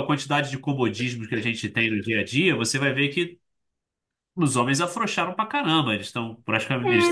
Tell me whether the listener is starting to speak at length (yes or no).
yes